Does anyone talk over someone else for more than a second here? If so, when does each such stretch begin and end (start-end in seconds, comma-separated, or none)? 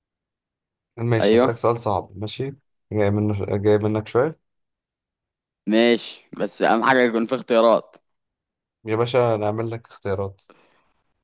none